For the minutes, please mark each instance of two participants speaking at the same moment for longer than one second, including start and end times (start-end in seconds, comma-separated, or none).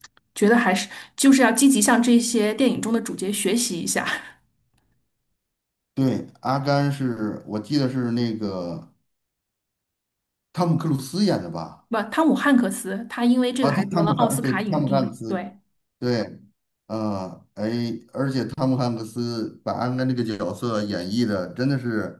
13.6-15.4